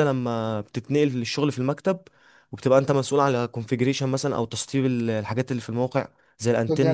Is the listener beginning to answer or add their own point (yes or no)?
no